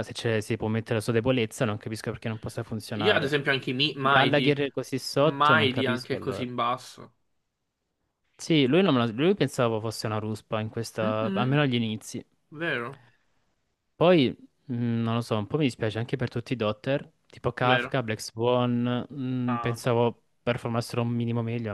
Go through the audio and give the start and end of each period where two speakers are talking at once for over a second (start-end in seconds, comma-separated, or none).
5.2-6.4